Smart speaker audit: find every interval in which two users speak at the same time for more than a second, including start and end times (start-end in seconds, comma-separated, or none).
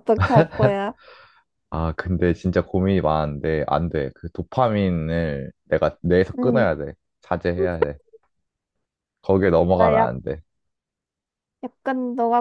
none